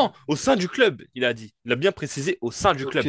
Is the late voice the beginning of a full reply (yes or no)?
yes